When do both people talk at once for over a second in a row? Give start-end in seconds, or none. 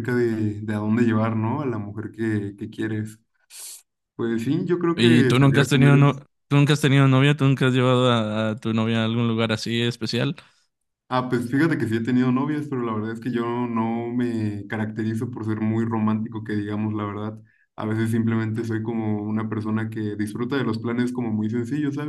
5.0-6.2